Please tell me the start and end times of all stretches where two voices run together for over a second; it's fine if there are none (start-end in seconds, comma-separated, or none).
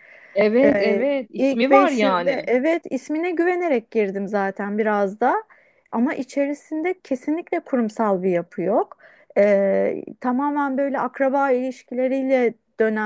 0.6-2.5